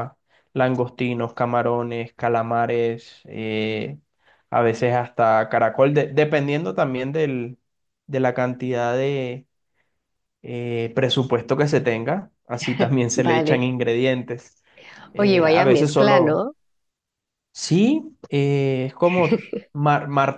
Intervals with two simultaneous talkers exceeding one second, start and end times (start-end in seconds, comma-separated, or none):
15.2-16.5